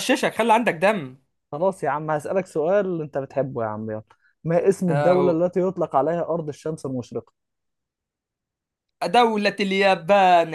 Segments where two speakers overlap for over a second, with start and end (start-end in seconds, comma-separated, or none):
none